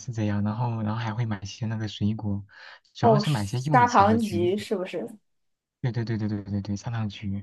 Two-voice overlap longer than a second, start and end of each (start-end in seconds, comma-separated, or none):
3.0-4.6